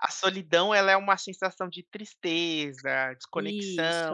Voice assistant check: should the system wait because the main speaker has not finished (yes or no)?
yes